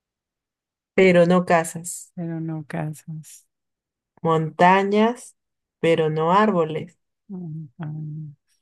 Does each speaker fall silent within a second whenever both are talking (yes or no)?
yes